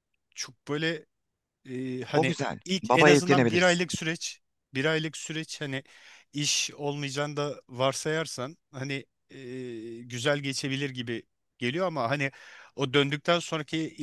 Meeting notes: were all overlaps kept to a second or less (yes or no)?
no